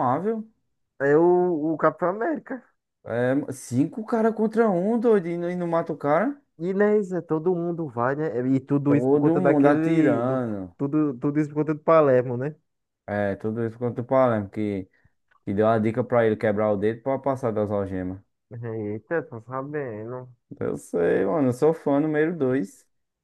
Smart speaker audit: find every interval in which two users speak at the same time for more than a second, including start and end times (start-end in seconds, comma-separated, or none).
8.9-10.4